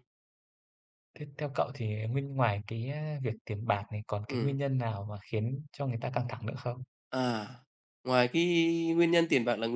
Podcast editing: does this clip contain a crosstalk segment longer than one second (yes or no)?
no